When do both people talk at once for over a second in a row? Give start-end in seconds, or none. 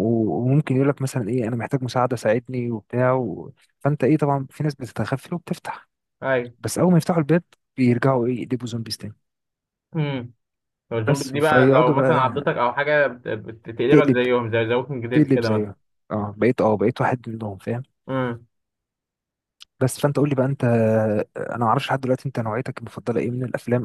11.1-12.6